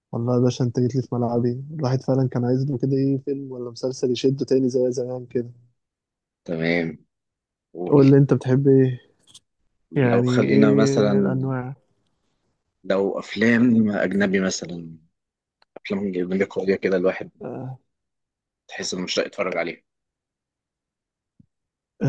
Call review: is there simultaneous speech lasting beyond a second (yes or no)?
yes